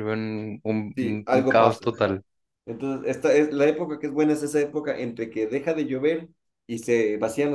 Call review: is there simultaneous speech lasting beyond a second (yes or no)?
yes